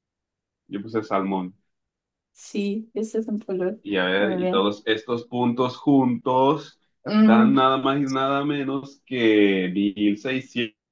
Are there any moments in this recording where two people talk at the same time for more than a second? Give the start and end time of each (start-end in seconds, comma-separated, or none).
none